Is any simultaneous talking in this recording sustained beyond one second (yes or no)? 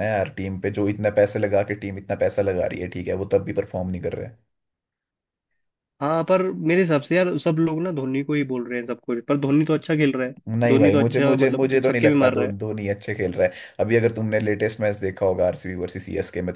yes